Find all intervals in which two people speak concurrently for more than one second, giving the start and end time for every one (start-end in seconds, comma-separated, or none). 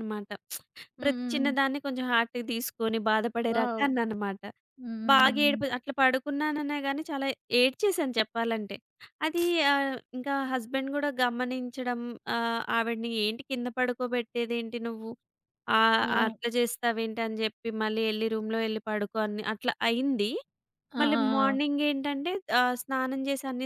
none